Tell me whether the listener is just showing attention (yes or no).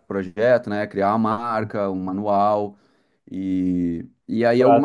yes